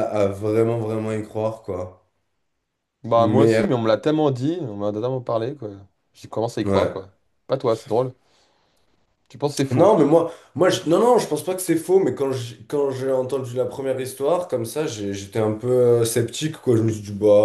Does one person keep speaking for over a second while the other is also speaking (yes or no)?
no